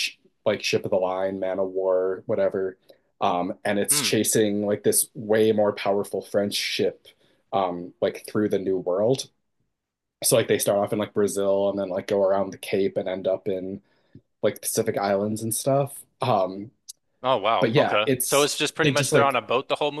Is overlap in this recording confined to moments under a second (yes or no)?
no